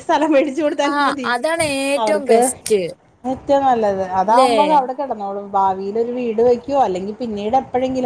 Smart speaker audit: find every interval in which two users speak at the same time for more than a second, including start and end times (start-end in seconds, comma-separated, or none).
none